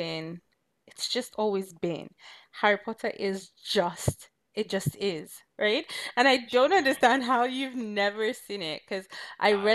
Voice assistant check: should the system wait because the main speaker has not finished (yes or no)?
yes